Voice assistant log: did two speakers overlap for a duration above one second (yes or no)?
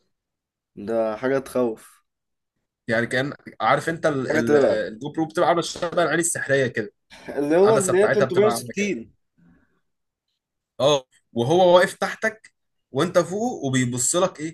yes